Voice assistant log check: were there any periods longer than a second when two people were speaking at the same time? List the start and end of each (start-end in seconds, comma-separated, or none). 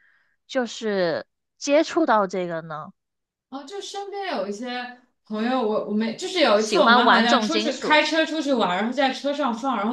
6.5-8.1